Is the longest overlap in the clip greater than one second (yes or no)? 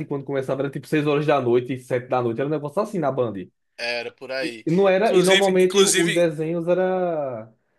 yes